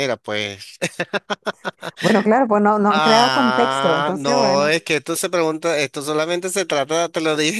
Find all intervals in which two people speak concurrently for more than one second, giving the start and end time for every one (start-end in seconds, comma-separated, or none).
2.9-4.8